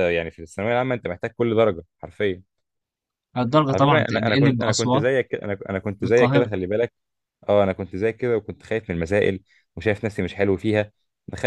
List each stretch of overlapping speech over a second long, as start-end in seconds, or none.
3.7-5.0